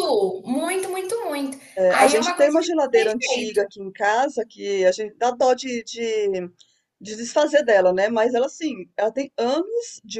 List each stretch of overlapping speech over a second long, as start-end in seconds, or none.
1.8-3.6